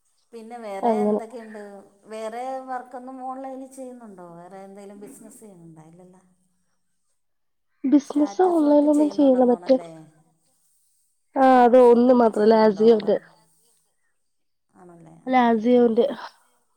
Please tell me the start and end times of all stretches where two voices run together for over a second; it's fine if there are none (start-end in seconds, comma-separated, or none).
8.1-9.8, 11.4-13.1